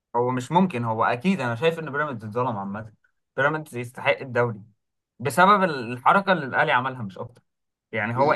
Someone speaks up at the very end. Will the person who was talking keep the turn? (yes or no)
yes